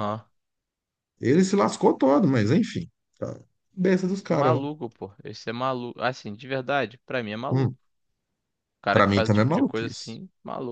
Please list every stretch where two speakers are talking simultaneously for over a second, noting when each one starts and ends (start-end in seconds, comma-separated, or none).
8.9-10.2